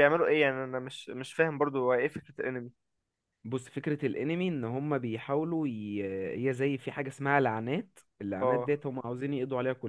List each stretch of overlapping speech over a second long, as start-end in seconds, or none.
none